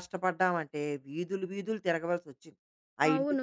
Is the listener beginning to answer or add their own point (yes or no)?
yes